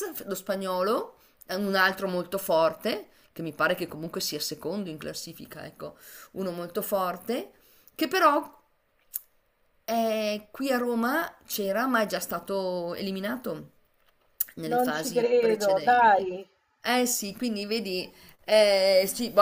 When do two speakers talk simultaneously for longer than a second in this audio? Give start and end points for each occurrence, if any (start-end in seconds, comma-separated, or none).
14.7-16.3